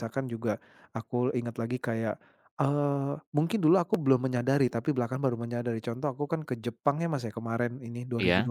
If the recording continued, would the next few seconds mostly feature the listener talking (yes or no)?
no